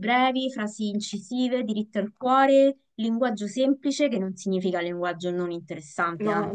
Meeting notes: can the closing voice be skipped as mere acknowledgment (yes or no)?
no